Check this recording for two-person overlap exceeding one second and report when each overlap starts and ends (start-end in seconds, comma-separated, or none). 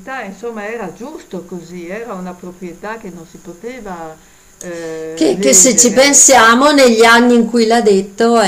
5.1-6.5